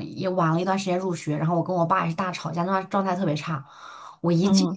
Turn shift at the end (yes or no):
no